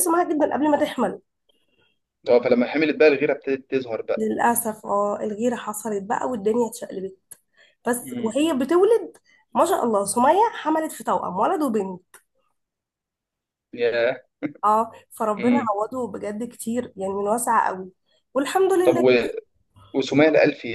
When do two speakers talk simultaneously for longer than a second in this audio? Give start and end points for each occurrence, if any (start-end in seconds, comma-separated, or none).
none